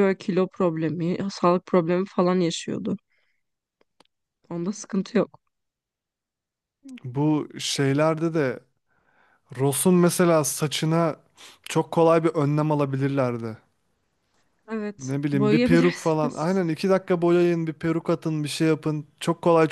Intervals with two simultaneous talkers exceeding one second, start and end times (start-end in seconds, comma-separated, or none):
15.0-16.6